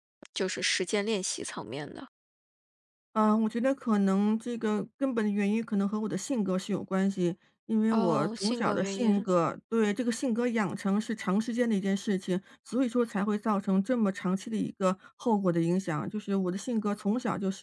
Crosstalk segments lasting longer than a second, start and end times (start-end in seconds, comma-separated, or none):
7.9-9.3